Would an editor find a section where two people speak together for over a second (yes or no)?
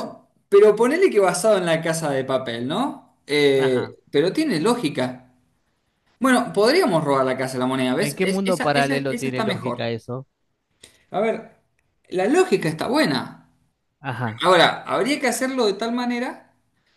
yes